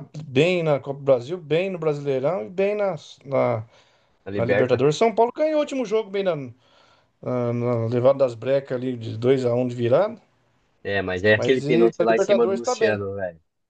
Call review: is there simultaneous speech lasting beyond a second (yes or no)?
yes